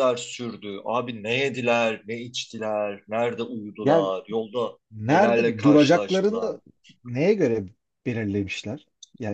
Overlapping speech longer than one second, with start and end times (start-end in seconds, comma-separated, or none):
4.9-6.6